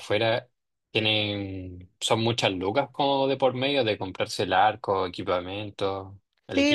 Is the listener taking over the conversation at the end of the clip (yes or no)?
yes